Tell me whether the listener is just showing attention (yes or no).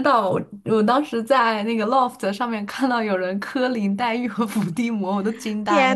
no